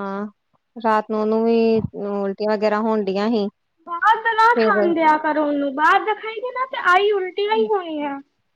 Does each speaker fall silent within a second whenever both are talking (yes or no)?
yes